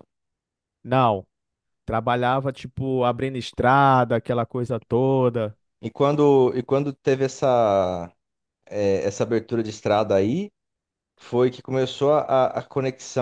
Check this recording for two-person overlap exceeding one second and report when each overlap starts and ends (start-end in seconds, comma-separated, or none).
none